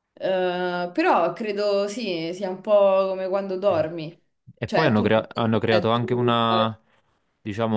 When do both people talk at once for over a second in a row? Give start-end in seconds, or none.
4.7-6.7